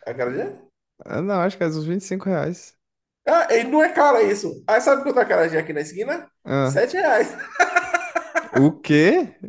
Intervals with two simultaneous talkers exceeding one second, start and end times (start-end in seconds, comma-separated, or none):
none